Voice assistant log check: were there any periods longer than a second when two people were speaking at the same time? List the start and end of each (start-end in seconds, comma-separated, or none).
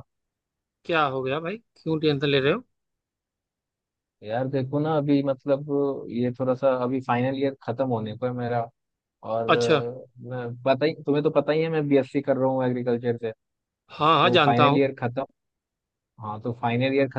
none